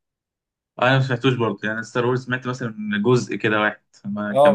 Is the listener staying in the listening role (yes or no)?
no